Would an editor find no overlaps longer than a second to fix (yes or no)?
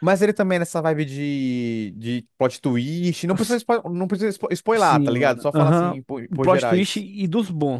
no